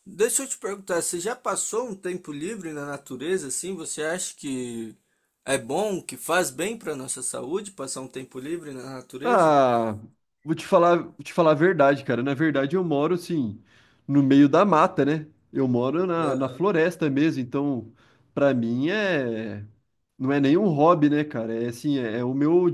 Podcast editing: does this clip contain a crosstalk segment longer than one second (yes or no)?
no